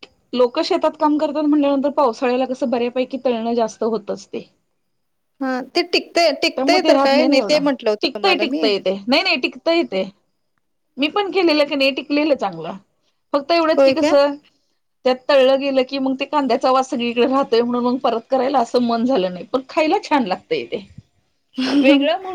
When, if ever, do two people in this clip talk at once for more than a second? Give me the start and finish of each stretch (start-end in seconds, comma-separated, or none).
none